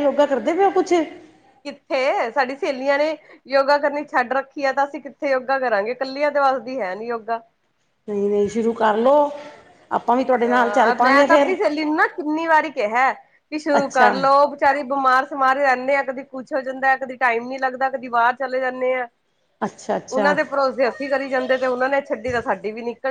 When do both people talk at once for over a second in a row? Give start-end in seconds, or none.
none